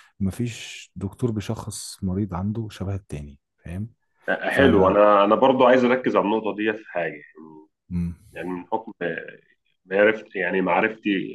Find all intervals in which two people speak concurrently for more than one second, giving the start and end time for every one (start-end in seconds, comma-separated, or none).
none